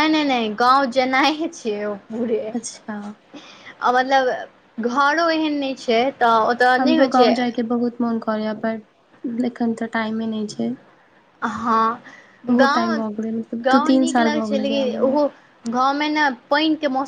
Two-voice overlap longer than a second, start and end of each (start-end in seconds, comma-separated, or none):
12.6-15.2